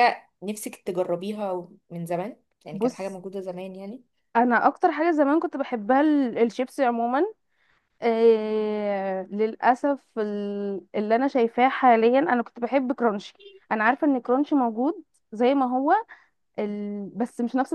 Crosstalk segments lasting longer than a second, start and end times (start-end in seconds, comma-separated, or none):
none